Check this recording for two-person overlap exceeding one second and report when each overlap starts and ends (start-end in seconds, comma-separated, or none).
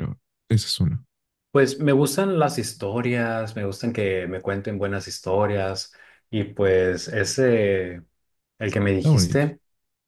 none